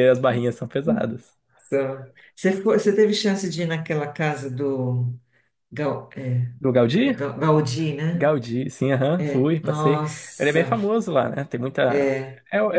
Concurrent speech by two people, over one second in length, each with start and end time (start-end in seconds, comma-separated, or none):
9.2-10.7